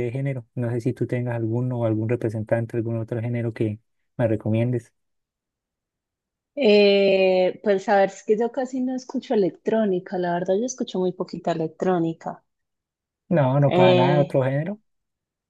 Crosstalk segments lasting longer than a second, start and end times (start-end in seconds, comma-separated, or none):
none